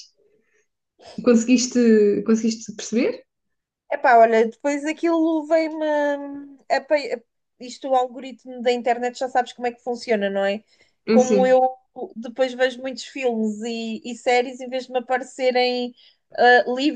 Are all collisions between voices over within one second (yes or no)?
yes